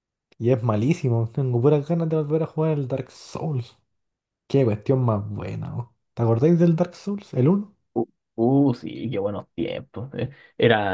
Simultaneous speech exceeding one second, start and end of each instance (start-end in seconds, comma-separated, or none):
none